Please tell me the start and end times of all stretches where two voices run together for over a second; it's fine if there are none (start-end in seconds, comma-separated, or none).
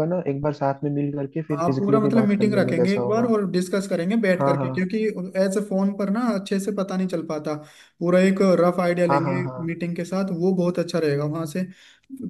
1.5-3.3